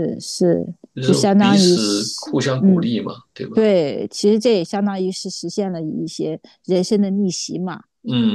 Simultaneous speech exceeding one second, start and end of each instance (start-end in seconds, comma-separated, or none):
0.9-2.9